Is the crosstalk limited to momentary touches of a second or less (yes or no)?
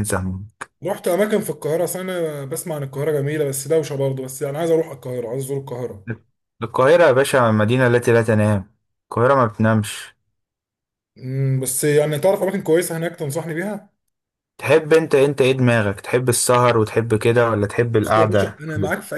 yes